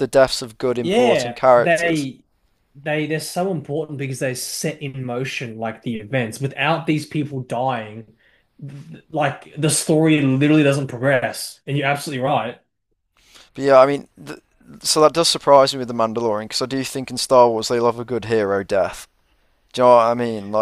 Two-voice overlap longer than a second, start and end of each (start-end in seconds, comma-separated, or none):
0.8-2.1